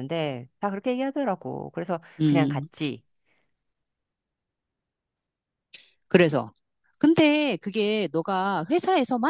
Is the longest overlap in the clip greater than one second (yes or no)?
no